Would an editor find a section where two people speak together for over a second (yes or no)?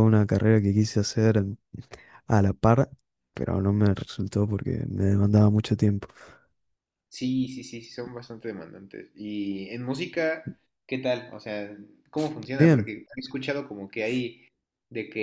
no